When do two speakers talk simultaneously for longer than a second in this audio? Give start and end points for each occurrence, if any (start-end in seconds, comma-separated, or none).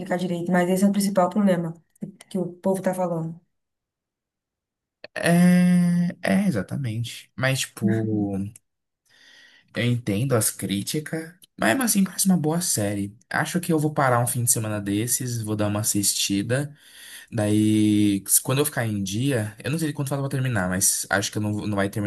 none